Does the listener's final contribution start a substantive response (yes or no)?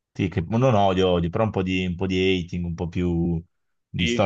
yes